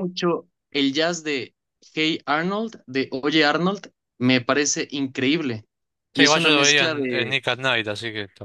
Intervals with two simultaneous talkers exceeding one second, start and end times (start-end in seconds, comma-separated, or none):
6.1-7.4